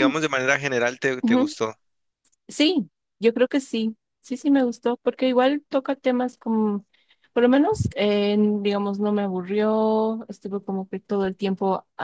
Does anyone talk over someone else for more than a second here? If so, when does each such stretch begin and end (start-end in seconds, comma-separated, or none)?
none